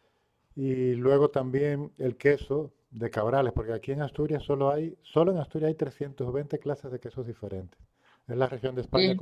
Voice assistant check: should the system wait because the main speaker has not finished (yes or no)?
yes